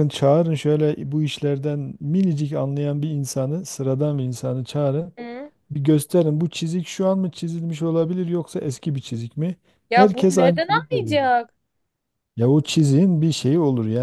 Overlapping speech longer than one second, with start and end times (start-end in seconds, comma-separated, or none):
9.9-11.2